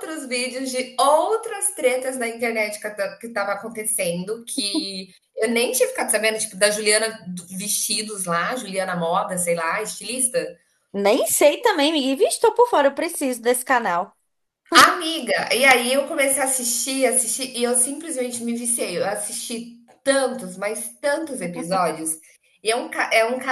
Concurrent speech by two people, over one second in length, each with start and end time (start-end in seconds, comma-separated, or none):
none